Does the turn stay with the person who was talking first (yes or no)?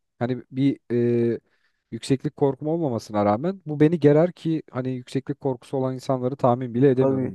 no